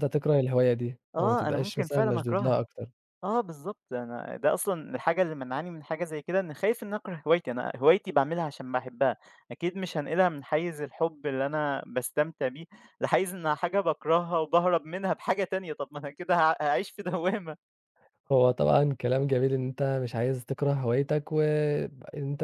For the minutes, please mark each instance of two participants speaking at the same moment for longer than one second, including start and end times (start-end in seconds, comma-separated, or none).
1.2-2.6